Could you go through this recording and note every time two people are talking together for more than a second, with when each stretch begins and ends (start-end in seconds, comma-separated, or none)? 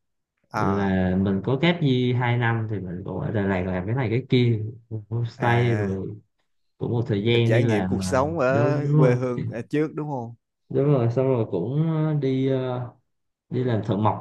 7.2-9.1